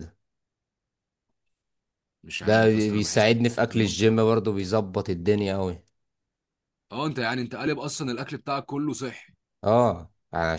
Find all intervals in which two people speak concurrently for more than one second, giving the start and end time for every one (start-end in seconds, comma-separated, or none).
2.4-4.3